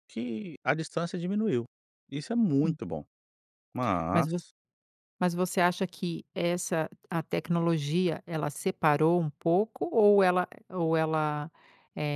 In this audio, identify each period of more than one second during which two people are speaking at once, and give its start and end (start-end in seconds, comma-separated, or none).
none